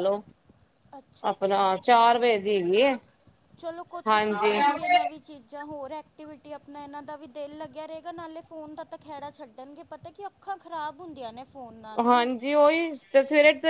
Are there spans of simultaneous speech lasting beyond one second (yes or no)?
no